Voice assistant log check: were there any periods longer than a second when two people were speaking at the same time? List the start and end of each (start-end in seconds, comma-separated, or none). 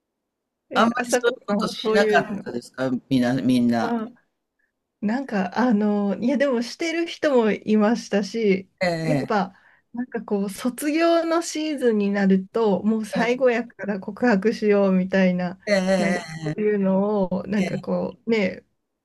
0.8-2.6